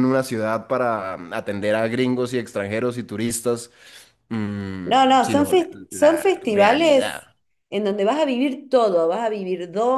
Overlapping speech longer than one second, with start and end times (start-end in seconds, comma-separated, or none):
4.8-7.2